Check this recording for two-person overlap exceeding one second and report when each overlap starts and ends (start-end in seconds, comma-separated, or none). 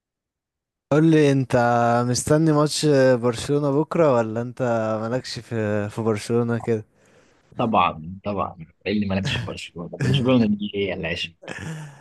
none